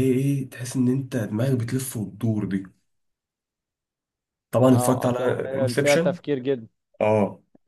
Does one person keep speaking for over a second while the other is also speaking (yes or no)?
yes